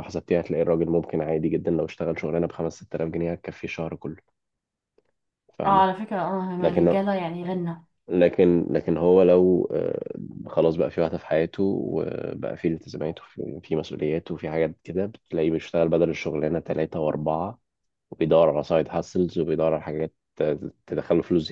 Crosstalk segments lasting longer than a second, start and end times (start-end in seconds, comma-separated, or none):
none